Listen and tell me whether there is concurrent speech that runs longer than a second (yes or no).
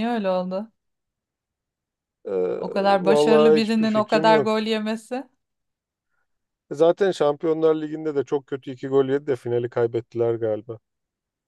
yes